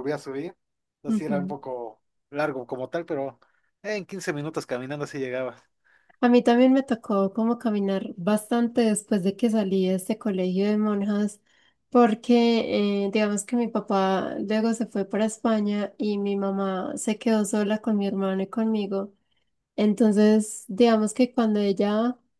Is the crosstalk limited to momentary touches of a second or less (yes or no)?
yes